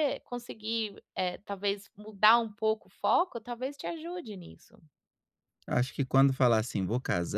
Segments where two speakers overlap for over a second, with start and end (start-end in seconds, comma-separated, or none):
none